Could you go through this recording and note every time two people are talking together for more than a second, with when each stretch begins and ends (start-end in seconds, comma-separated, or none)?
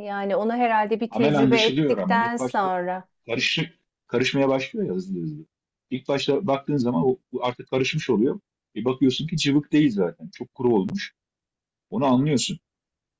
1.1-2.7